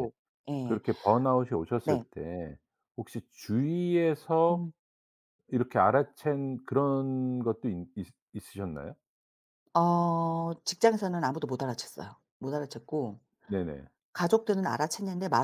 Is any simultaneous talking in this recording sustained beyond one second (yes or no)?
no